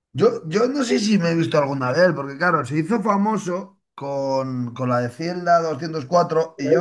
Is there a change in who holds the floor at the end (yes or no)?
yes